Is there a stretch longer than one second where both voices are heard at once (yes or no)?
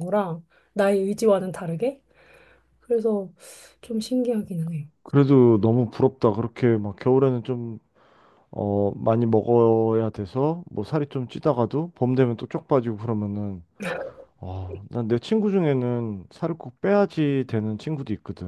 no